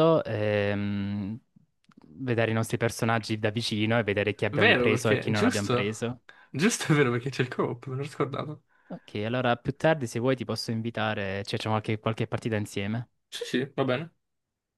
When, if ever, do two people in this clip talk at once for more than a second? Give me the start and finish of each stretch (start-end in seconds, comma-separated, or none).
4.5-6.1